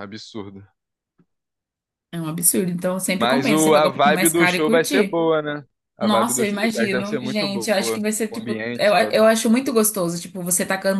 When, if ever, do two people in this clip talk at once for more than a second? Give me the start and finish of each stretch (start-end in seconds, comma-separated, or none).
3.2-5.2, 6.0-9.2